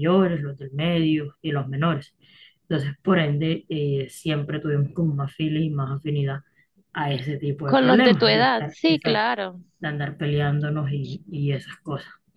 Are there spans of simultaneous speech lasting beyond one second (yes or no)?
yes